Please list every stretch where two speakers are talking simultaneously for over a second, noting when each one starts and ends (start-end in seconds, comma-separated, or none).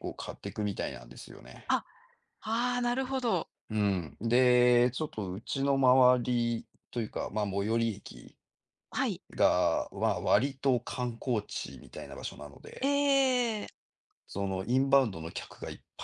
none